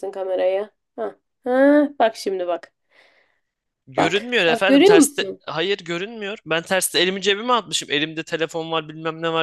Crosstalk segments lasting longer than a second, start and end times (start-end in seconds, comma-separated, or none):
4.0-5.4